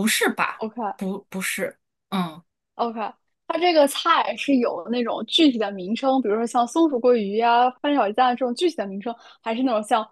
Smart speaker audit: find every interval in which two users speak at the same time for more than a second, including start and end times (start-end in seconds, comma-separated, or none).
none